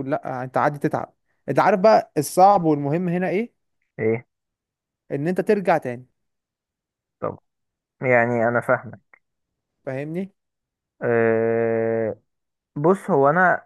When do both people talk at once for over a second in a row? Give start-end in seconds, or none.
none